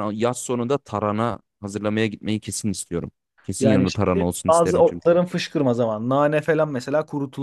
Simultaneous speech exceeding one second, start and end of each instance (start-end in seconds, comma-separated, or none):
3.6-5.2